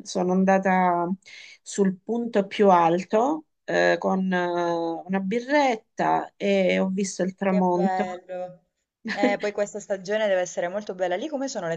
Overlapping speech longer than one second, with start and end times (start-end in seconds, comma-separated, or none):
none